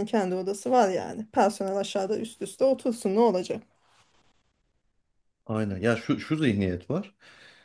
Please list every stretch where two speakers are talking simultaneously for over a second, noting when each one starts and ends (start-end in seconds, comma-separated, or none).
none